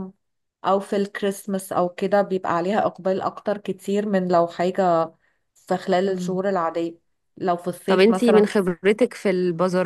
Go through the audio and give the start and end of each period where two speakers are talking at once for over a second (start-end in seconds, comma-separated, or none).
none